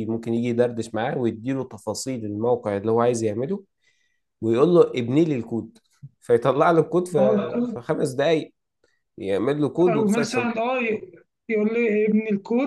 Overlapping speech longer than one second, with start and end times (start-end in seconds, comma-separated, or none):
none